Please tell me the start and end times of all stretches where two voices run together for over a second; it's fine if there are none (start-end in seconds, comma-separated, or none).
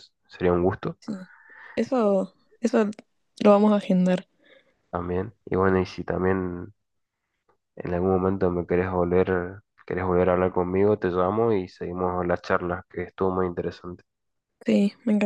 none